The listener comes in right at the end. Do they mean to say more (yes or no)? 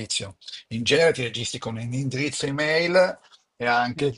no